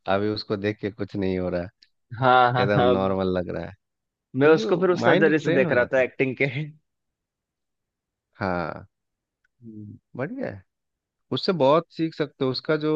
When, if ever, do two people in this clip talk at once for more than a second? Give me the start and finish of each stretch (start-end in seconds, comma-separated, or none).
4.4-6.1